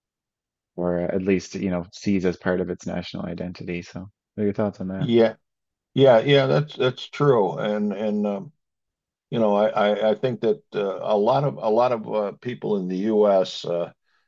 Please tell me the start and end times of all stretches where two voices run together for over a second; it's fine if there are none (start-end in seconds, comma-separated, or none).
none